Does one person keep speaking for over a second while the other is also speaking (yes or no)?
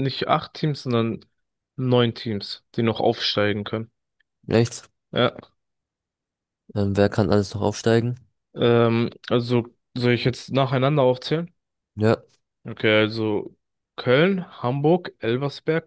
no